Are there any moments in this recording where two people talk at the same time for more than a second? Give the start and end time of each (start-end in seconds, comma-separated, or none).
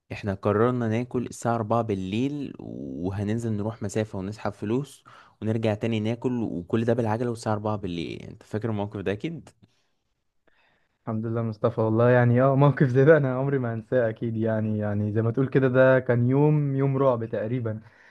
none